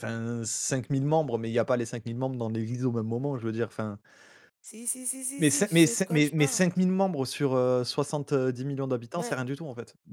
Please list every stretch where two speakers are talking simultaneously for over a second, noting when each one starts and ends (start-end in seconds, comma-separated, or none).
5.4-6.6